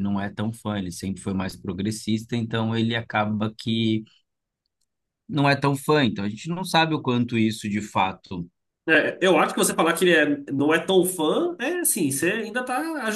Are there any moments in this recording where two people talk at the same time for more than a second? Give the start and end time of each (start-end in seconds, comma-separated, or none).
none